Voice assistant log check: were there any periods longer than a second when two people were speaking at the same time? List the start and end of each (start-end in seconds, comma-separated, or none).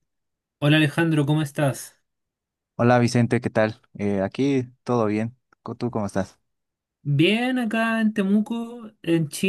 none